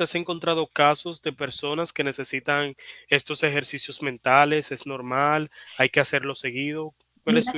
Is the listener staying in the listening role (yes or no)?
no